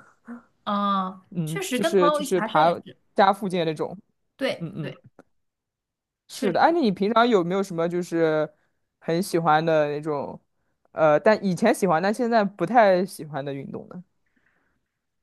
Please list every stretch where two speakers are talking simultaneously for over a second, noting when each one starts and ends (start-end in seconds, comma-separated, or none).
1.3-2.7